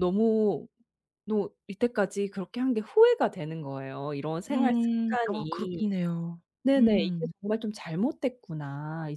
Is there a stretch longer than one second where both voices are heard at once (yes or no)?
yes